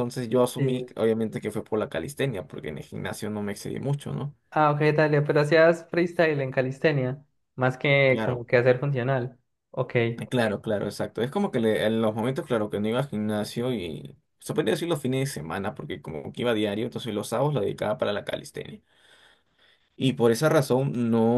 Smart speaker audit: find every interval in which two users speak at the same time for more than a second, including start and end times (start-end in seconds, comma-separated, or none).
none